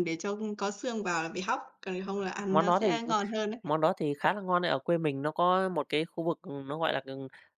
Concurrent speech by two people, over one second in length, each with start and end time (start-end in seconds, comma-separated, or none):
none